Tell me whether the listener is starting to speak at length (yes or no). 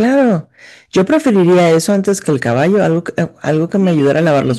yes